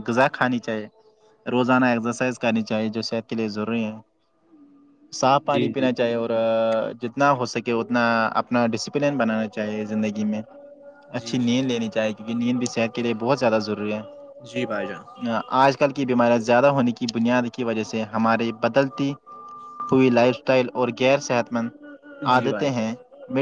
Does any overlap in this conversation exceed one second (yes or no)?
no